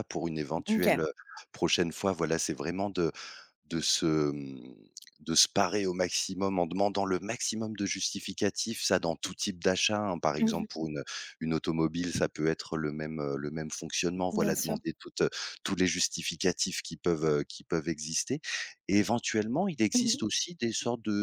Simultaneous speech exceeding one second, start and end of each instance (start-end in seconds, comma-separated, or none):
none